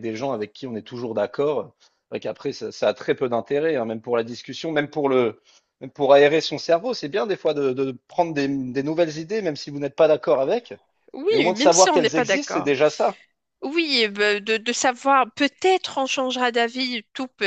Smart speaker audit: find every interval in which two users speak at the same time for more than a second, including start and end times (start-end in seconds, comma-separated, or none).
11.3-12.7